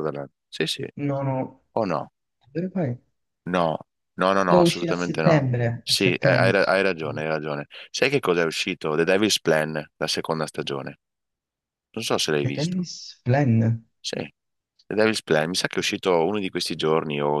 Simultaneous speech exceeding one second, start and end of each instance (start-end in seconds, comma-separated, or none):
4.5-6.6